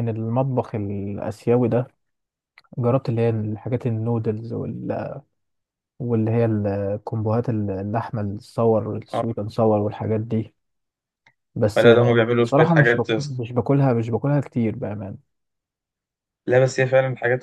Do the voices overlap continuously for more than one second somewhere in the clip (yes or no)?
yes